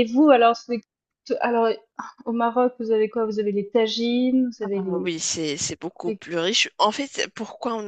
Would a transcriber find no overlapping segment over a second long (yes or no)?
yes